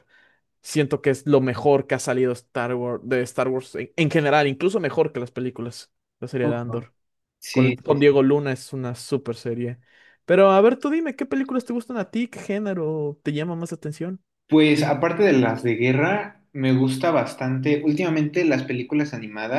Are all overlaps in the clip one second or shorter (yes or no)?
yes